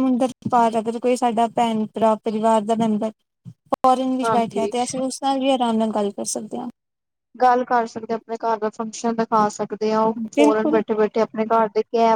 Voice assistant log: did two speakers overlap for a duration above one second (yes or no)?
no